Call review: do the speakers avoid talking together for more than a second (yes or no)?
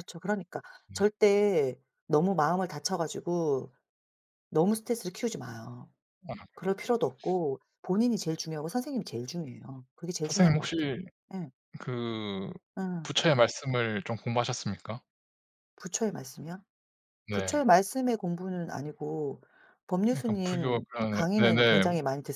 no